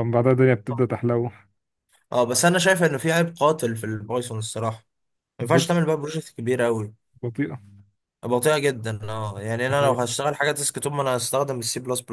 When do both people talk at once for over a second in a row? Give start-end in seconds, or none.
none